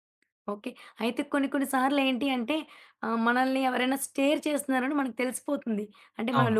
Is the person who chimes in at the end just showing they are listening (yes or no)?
yes